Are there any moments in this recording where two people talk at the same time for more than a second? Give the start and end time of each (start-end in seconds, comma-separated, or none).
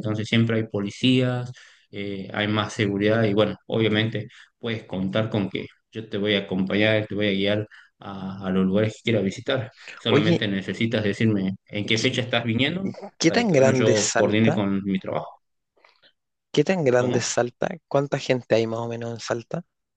13.2-14.6